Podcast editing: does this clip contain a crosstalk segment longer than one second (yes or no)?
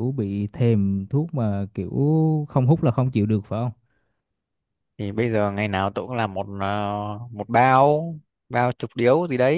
no